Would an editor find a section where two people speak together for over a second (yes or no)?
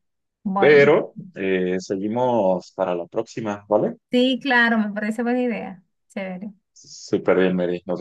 no